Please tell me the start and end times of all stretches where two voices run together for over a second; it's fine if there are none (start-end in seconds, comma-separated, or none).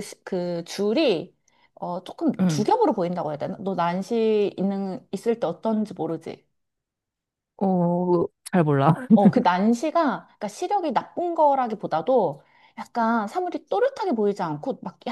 none